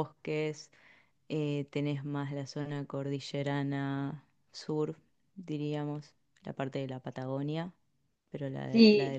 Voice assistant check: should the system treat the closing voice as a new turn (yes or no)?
yes